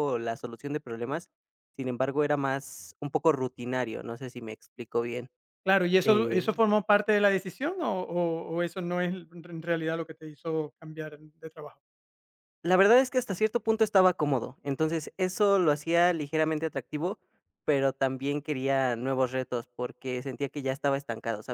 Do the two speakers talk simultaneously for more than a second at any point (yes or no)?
no